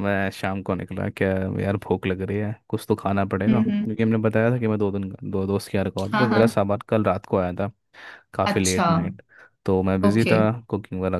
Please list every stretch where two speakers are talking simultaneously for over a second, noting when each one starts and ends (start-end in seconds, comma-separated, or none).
none